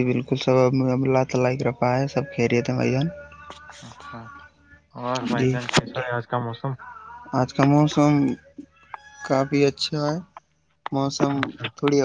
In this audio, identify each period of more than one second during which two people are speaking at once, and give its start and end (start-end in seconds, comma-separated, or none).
none